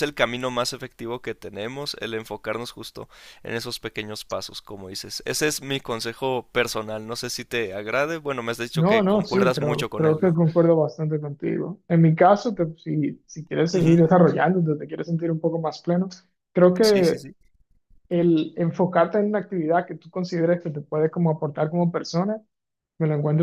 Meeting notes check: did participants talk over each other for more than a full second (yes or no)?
yes